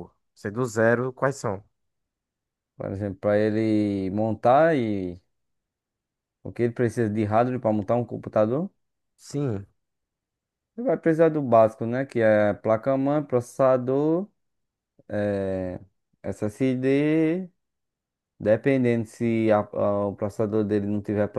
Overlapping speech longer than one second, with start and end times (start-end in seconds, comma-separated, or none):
none